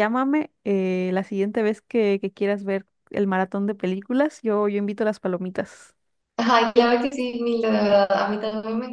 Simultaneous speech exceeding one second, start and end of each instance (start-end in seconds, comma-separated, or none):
none